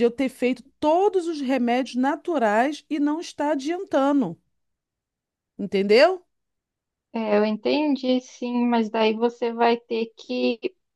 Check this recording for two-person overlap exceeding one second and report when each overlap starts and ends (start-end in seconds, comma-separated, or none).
none